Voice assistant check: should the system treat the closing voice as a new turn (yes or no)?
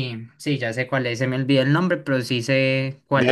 yes